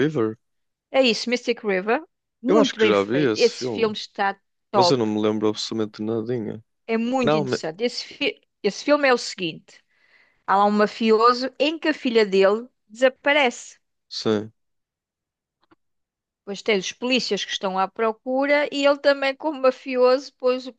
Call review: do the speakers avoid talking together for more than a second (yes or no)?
no